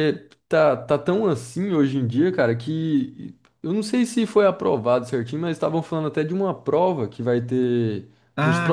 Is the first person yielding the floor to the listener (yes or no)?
yes